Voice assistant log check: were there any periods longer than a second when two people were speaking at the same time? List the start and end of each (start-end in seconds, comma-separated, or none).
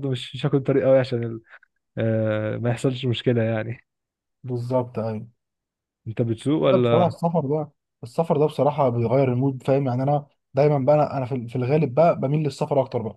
none